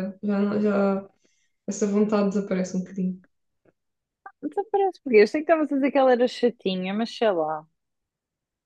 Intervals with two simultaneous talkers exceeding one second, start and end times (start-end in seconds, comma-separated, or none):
none